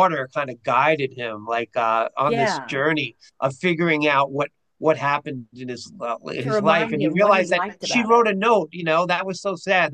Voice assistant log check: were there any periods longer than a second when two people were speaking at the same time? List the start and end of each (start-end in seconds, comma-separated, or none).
6.4-8.3